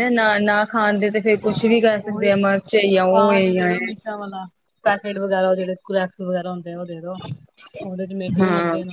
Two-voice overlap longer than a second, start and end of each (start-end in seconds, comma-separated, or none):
none